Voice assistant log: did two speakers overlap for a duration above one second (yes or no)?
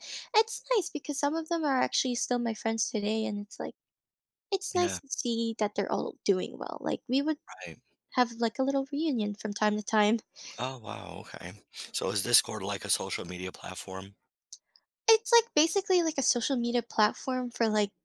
no